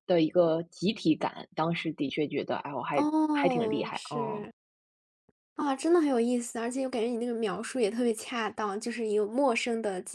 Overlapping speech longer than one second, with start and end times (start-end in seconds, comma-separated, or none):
2.9-4.5